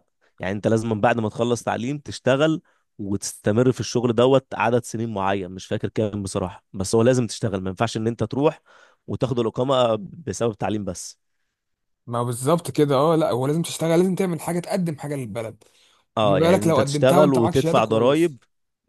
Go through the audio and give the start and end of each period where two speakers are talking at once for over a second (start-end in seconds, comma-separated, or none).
16.2-18.4